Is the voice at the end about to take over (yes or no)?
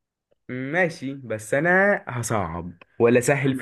yes